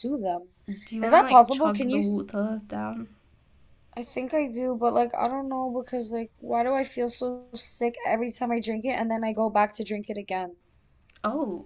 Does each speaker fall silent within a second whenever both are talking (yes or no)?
no